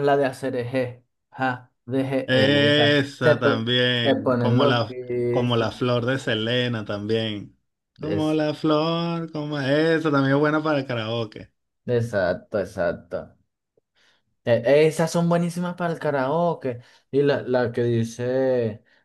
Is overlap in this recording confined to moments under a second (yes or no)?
no